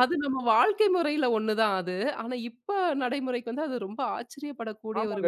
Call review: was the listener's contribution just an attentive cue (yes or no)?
no